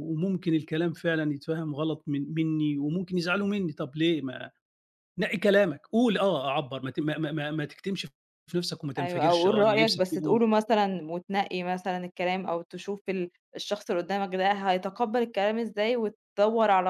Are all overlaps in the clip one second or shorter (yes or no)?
no